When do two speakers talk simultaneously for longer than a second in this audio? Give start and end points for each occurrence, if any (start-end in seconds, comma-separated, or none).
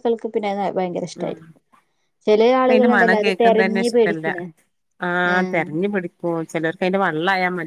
2.6-4.3